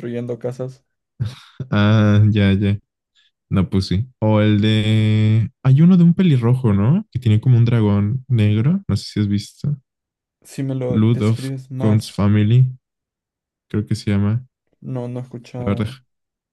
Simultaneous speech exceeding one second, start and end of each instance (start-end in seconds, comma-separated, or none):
10.9-12.3